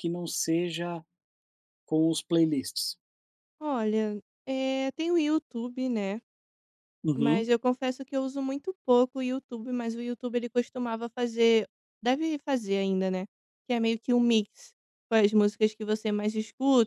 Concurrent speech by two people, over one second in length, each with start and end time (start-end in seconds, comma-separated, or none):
none